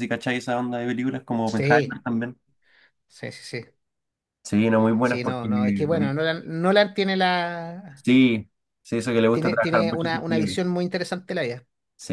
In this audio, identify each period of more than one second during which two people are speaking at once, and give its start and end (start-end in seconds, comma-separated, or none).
9.3-10.6